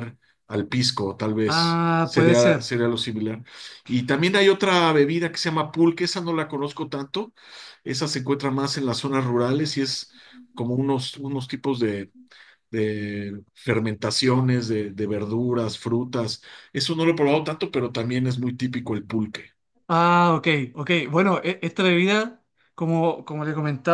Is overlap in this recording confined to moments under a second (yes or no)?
no